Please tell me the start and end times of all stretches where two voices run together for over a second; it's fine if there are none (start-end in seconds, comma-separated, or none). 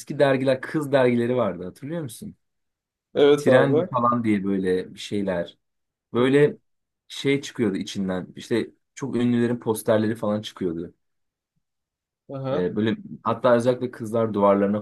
none